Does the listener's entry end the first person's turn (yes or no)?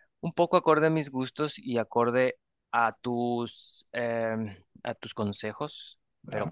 yes